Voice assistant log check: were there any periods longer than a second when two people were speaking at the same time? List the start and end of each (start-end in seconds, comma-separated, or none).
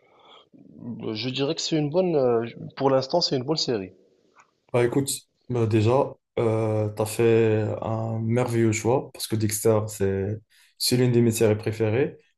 none